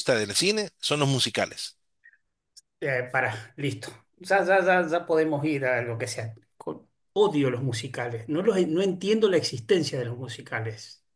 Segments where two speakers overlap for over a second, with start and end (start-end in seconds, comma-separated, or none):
none